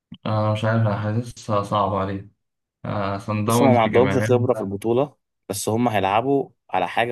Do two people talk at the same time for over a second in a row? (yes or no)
yes